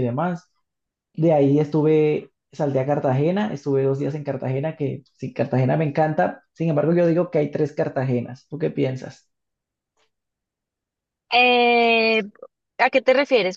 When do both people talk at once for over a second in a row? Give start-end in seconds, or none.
none